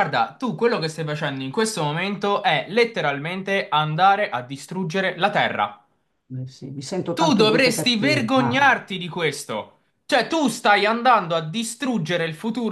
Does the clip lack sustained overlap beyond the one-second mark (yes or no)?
no